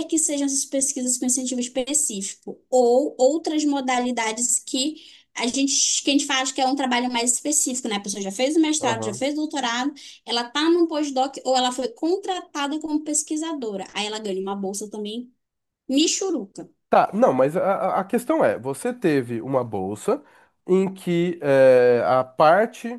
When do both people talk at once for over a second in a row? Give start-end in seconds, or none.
none